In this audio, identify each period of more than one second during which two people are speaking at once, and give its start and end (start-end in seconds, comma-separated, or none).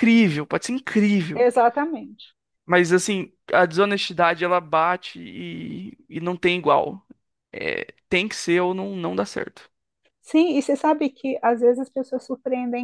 none